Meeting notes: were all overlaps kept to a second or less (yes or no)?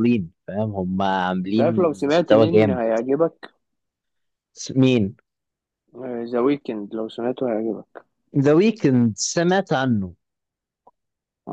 no